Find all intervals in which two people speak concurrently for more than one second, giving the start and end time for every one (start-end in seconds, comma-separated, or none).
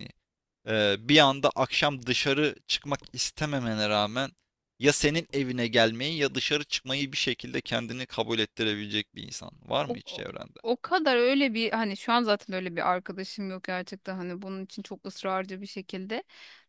none